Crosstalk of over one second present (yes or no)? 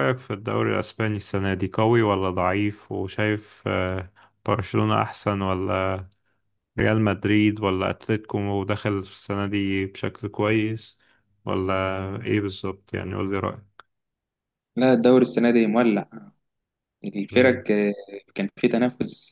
no